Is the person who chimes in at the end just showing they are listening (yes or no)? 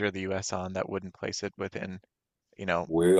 yes